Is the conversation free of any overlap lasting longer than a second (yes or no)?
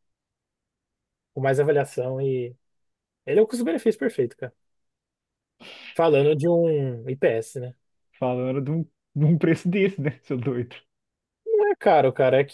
yes